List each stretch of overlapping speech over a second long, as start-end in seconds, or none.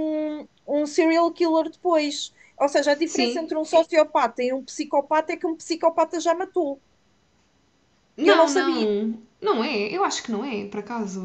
none